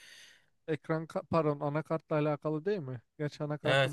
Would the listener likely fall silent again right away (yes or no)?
no